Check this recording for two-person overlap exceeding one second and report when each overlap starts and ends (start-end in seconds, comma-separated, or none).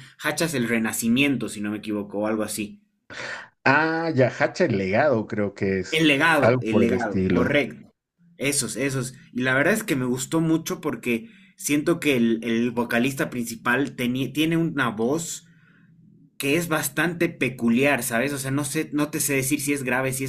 5.9-7.5